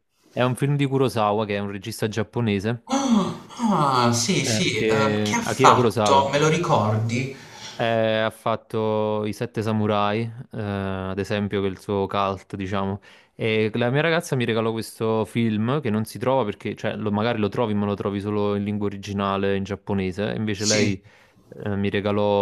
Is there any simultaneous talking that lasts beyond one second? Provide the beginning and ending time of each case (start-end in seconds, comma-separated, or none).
4.4-6.3